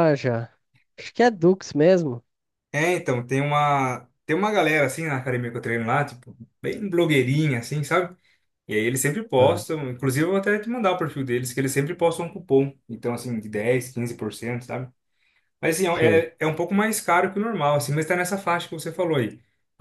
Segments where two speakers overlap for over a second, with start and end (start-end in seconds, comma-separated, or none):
none